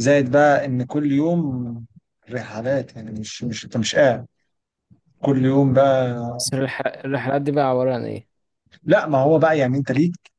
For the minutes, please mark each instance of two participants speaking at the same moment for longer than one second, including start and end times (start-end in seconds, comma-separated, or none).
none